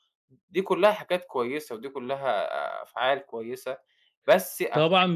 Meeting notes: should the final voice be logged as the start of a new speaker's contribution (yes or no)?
yes